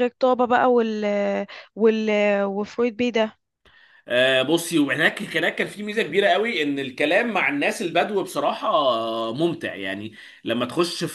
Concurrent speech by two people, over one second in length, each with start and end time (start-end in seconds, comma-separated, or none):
none